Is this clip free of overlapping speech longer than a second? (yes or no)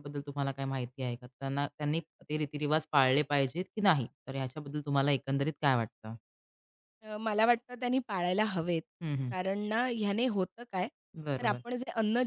yes